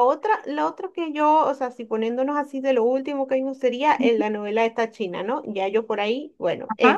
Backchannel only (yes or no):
yes